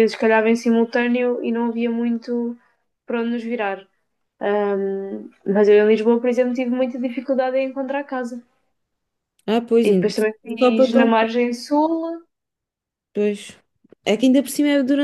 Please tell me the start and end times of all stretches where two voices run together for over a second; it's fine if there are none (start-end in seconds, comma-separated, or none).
9.8-11.1